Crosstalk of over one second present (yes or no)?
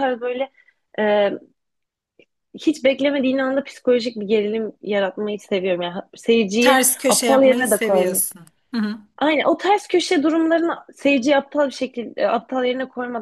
yes